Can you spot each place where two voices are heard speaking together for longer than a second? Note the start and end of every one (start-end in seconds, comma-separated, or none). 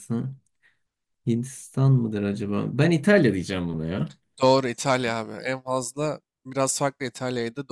none